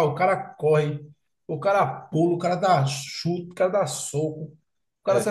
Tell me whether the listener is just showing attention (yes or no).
yes